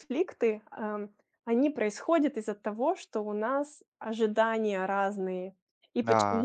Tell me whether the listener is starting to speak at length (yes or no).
no